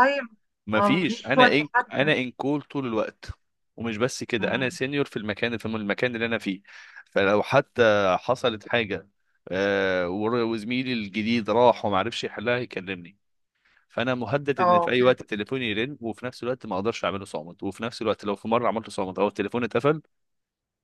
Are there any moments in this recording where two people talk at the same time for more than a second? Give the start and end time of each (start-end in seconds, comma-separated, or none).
0.8-2.2